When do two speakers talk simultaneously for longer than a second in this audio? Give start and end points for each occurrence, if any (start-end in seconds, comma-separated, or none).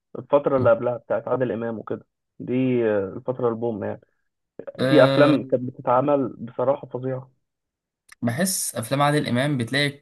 none